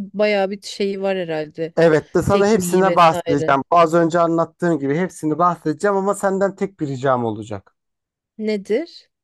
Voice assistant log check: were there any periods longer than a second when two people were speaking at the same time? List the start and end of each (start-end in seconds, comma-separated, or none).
2.3-3.6